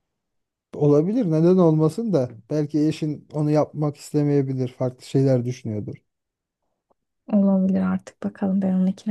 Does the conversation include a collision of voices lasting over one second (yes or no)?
no